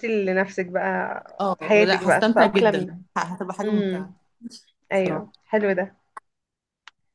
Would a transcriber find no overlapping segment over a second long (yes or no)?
no